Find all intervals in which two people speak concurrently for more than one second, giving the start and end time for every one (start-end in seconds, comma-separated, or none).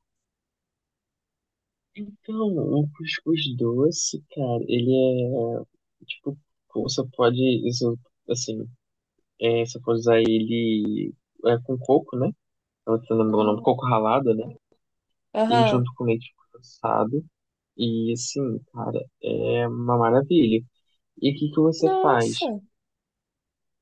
none